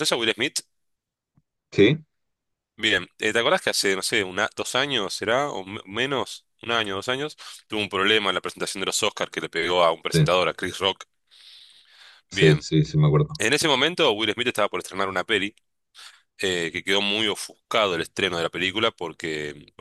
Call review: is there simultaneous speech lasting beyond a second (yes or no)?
no